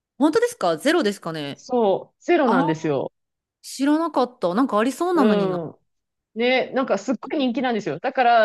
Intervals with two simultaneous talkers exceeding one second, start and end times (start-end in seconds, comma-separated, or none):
none